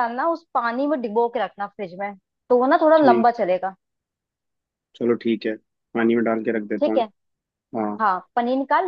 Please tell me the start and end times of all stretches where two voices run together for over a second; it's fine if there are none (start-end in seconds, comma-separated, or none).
none